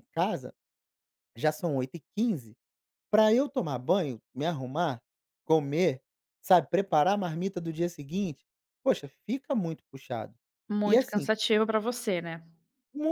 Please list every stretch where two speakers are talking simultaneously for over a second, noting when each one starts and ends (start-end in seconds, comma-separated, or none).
none